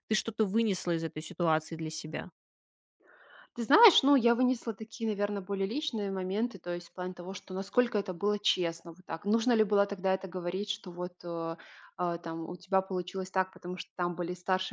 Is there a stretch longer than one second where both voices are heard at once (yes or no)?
no